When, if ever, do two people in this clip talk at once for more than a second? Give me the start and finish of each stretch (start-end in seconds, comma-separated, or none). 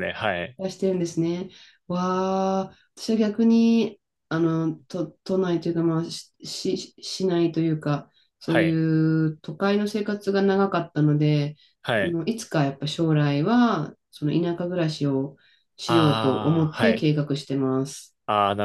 15.8-17.1